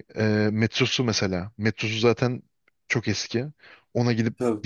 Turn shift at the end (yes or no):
no